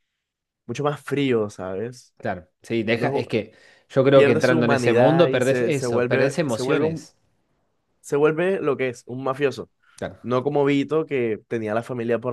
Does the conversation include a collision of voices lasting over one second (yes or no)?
yes